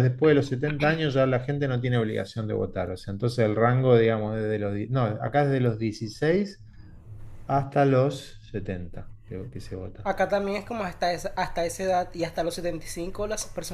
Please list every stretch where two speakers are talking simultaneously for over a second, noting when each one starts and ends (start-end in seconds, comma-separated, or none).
none